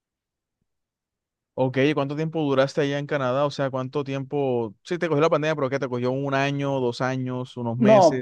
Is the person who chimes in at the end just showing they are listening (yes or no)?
no